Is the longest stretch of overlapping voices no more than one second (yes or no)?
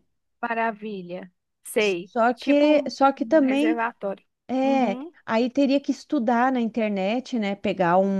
no